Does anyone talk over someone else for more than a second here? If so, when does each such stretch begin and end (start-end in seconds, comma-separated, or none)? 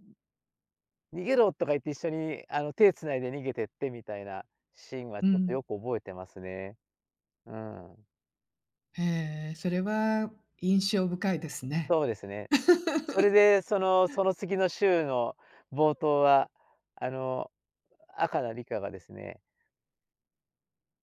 none